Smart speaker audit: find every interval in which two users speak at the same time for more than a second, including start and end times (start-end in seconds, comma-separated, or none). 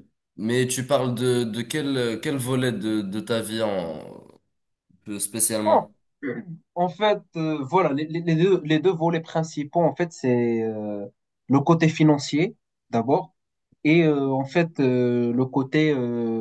none